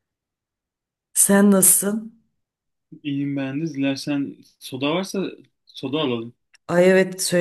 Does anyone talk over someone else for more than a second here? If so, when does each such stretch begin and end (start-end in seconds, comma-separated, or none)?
none